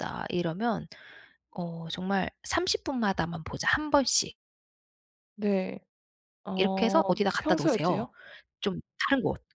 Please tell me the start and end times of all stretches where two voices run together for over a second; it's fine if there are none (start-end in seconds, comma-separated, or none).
6.5-8.1